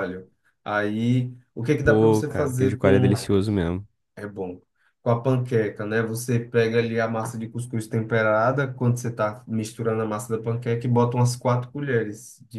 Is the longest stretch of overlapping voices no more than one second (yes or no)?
no